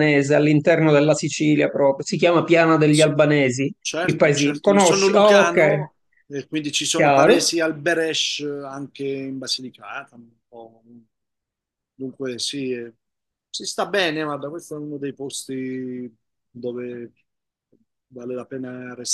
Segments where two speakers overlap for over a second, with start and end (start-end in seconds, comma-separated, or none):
3.8-5.9